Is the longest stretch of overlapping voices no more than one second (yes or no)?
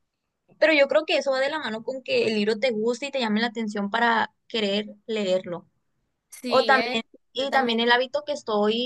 no